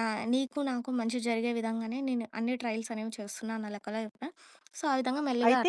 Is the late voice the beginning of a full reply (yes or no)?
yes